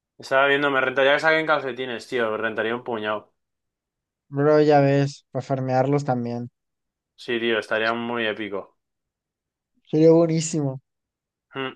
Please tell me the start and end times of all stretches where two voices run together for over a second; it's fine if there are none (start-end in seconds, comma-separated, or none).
none